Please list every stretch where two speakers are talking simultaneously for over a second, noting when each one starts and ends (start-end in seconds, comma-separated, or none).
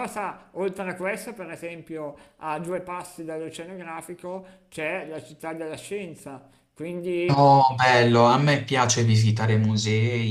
none